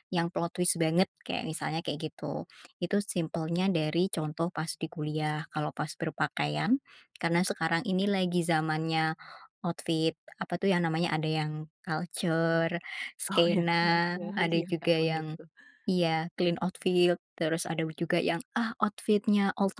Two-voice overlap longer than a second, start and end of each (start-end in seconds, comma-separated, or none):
13.3-15.4